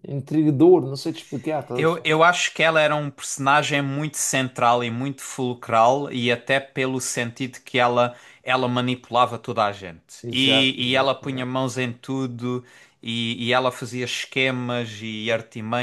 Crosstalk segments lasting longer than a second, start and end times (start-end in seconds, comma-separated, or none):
10.2-11.5